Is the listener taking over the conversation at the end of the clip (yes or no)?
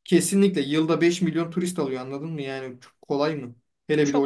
no